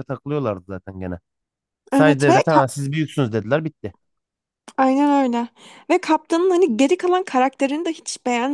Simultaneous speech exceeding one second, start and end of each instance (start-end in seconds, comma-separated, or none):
none